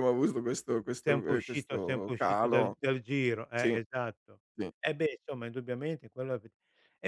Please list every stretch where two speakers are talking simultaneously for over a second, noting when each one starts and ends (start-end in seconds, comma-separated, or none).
1.0-2.8